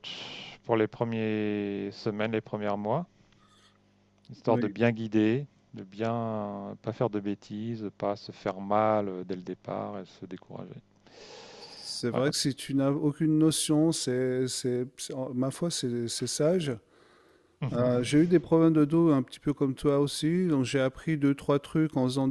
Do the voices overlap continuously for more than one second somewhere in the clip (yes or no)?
no